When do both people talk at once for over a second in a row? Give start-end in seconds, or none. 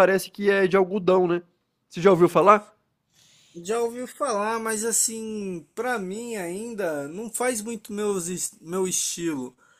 none